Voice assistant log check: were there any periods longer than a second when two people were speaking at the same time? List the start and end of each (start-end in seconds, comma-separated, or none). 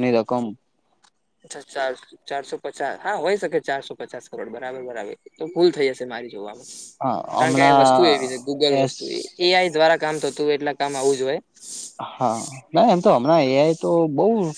7.4-8.9